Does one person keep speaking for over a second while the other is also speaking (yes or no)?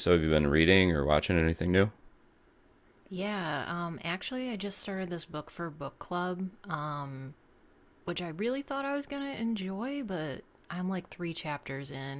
no